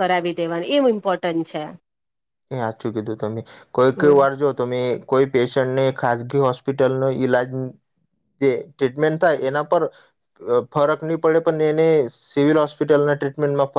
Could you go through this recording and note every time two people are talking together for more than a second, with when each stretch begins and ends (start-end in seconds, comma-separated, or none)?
none